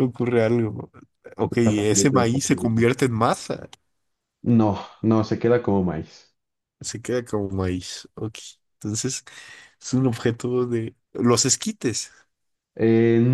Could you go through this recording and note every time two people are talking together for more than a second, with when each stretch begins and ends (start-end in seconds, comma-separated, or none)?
1.5-2.9